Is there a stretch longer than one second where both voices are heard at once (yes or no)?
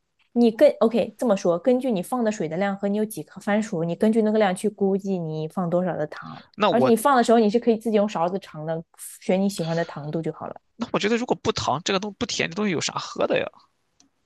no